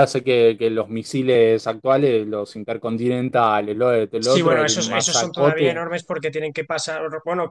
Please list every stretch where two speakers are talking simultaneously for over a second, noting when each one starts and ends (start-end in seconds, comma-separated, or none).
4.2-5.8